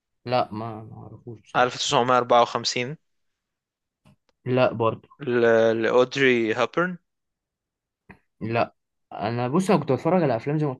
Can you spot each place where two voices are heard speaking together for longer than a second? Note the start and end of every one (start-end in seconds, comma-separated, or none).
none